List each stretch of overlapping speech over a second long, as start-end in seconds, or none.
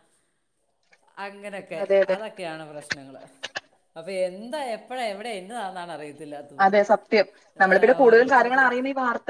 none